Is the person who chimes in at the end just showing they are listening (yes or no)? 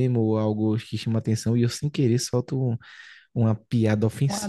yes